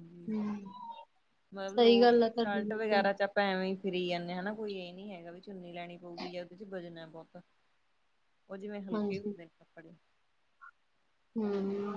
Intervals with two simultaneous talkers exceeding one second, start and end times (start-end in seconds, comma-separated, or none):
1.8-3.1